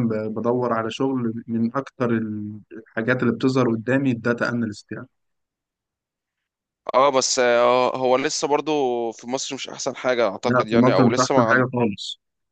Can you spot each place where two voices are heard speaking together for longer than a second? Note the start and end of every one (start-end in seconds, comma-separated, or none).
10.4-11.6